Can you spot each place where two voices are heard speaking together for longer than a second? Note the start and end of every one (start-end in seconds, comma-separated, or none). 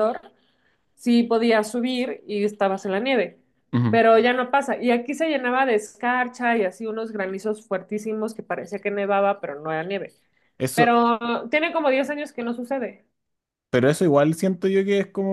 none